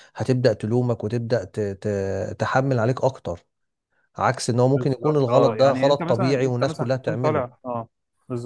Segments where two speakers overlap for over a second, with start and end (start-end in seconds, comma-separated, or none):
4.7-7.5